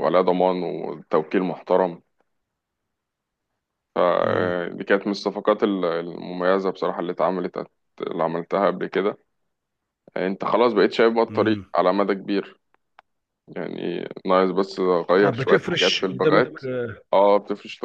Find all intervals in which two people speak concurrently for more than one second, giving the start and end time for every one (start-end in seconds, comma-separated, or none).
15.2-16.5